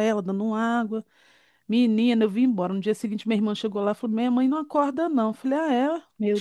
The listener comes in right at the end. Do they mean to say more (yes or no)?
no